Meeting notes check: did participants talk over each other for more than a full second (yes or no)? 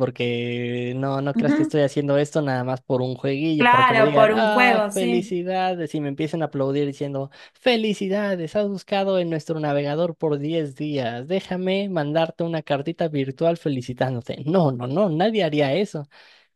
yes